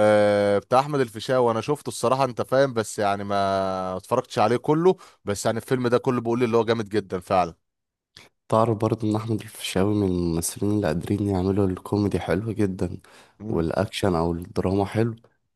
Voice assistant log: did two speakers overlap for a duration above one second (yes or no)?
no